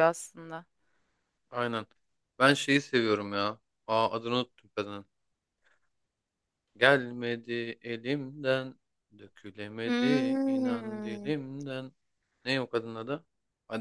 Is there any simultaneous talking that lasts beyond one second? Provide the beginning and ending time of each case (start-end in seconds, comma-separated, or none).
9.8-11.3